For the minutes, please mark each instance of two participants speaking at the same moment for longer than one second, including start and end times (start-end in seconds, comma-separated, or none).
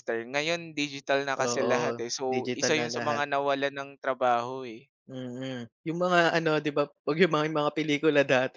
1.5-3.2